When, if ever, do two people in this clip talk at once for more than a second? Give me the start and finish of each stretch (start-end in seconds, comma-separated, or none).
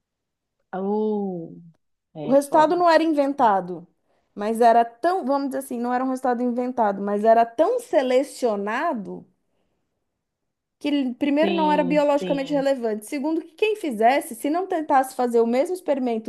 11.4-12.7